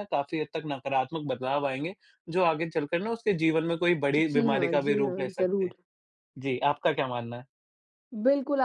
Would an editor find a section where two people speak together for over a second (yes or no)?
yes